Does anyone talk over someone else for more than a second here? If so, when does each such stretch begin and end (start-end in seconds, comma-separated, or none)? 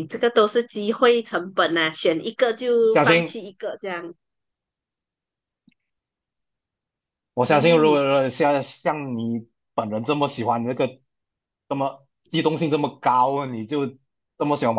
none